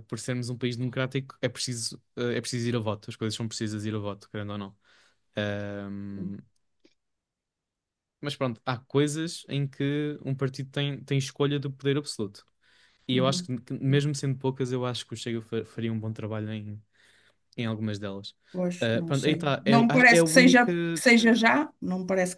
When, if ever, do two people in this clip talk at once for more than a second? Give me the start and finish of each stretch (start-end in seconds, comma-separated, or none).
18.8-20.7